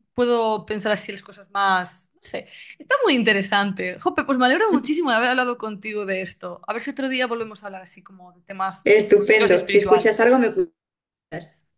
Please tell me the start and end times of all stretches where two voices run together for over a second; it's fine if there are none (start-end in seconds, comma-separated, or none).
8.8-10.3